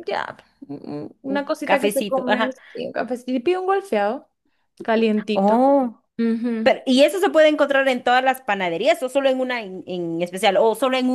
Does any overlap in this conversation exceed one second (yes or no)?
yes